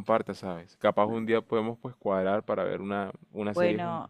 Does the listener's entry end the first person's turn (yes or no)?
yes